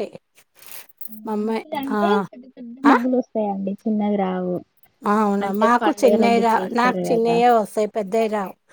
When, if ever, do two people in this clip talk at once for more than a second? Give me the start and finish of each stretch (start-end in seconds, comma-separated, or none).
5.5-7.3